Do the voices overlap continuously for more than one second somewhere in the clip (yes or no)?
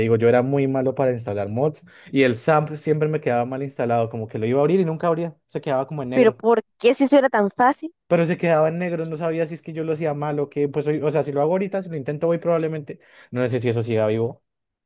no